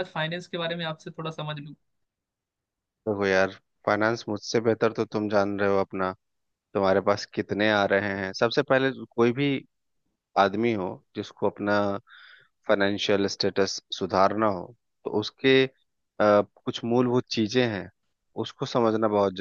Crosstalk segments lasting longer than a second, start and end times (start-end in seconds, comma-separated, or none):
none